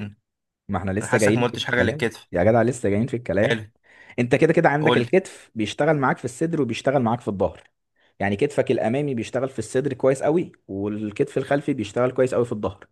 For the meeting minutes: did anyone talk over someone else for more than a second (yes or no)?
yes